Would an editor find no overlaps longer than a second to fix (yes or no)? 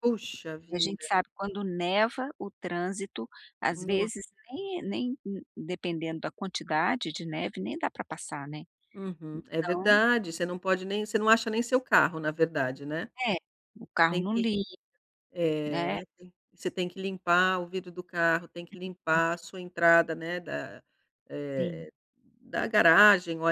yes